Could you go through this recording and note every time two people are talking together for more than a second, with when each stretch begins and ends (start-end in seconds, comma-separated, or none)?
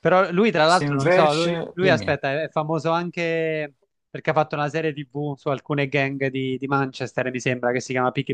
0.7-2.2